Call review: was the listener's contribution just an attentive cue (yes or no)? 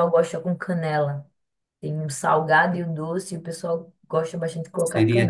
no